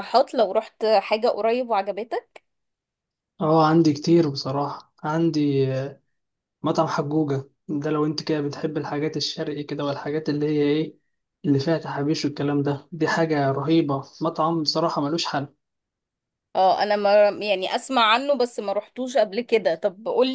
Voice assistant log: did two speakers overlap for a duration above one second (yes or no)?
no